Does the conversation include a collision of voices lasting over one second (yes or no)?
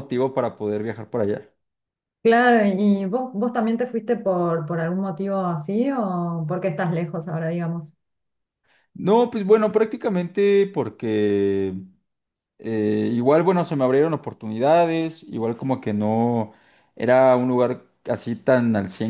no